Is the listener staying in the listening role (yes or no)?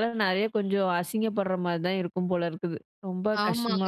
no